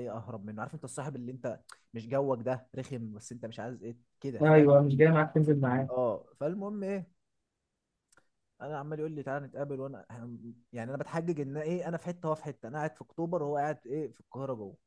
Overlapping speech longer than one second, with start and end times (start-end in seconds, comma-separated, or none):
none